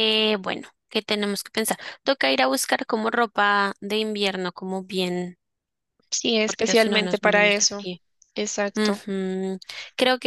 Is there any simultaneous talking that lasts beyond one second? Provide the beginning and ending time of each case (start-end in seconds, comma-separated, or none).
6.4-7.8